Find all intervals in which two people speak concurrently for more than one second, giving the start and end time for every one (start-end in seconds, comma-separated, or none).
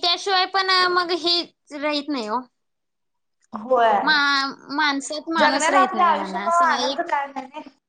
5.4-7.0